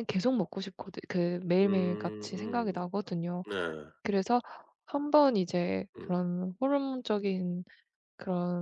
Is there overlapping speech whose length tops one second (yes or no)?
yes